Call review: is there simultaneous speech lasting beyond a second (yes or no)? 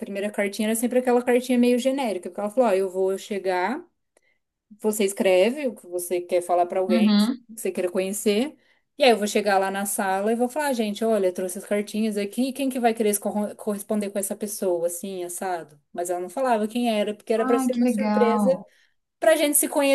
yes